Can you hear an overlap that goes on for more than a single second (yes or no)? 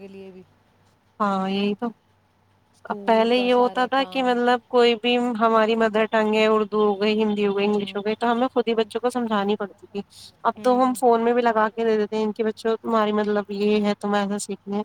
yes